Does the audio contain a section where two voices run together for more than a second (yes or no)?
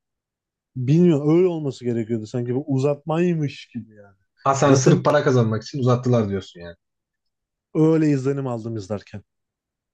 no